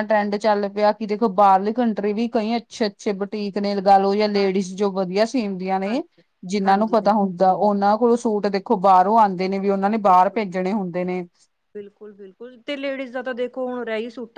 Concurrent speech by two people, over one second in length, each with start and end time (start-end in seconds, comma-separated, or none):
none